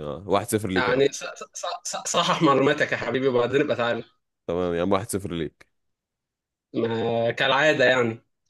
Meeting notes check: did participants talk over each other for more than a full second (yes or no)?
no